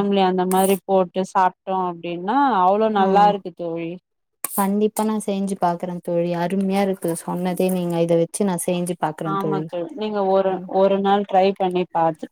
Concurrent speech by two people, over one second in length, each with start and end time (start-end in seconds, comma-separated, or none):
none